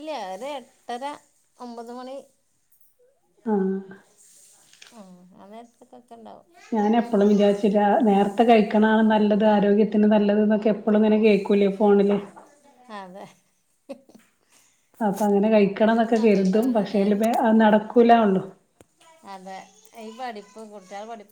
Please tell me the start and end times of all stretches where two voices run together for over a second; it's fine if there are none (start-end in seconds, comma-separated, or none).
15.7-17.1